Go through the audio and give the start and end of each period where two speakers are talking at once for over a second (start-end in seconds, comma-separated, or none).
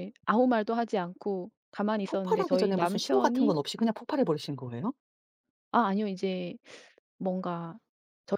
2.1-3.5